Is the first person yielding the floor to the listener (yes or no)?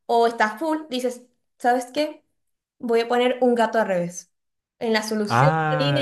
yes